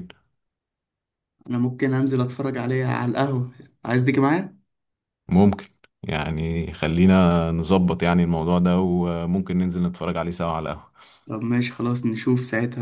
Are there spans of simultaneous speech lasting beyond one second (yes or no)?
no